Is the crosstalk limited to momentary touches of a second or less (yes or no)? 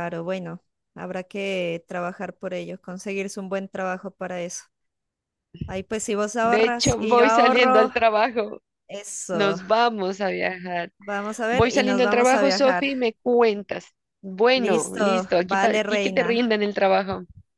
no